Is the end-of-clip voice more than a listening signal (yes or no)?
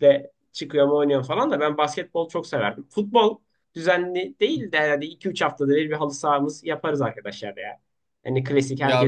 yes